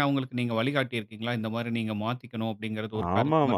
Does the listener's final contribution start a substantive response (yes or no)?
yes